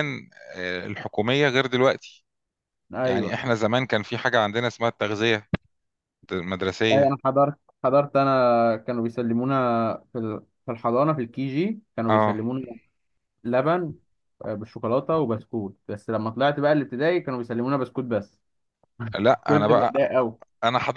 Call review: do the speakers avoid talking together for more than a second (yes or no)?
yes